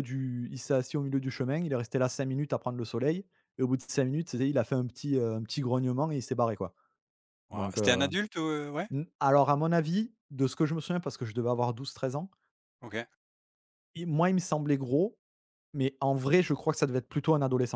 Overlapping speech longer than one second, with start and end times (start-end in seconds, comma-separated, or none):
none